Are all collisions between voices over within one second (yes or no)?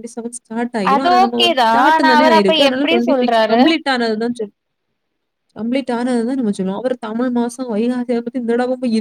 no